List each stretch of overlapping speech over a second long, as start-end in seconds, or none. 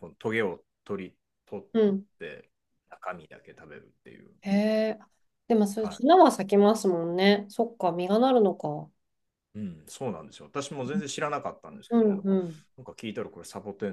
none